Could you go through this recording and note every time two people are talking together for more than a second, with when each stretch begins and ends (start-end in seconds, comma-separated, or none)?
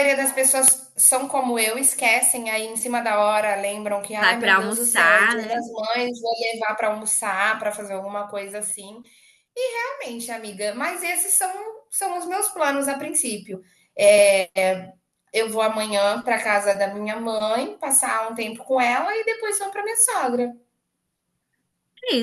4.2-5.6